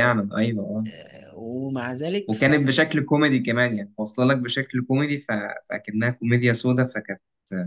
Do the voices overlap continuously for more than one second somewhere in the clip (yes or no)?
no